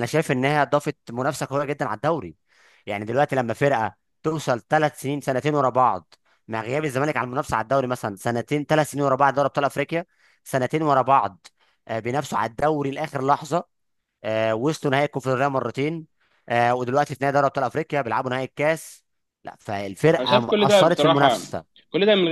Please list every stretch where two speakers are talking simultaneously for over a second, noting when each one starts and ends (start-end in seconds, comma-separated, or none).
20.2-21.5